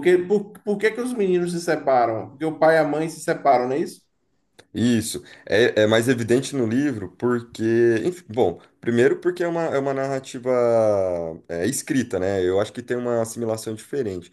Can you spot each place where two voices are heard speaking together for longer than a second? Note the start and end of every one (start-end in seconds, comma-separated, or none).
none